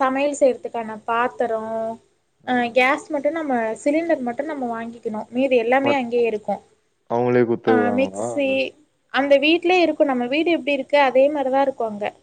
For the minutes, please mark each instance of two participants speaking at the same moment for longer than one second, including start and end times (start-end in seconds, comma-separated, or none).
none